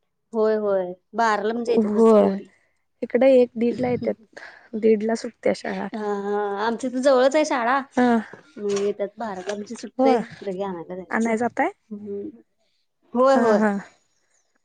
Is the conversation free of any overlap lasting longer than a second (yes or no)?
yes